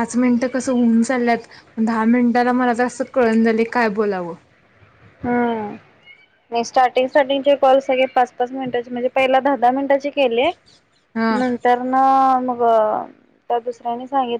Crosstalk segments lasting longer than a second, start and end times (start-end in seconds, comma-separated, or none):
none